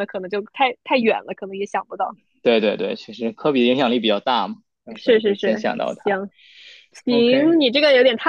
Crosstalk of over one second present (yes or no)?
yes